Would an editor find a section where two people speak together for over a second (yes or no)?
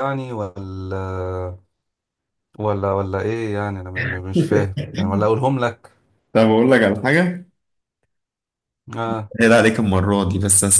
no